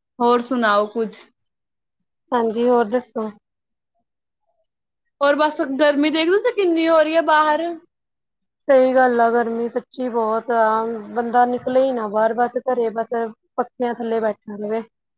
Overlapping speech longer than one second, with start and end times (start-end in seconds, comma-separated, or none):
none